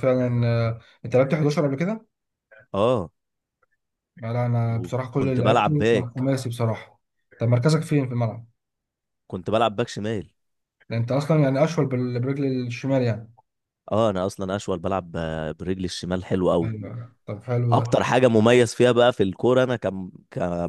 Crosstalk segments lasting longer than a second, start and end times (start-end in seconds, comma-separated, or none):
4.6-6.3